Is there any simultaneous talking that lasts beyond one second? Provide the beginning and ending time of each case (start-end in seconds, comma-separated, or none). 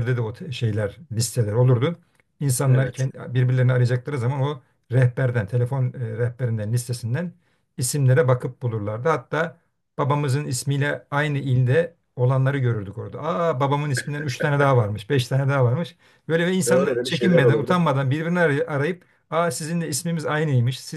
16.7-17.9